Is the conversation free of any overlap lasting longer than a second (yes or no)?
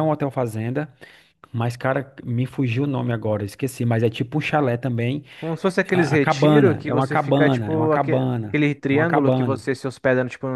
no